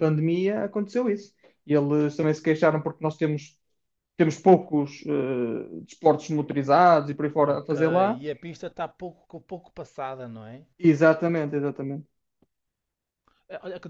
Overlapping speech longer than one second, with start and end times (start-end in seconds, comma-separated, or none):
none